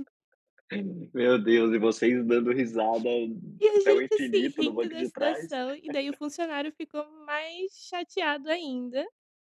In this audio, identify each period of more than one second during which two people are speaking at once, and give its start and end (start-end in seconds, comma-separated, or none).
3.8-5.5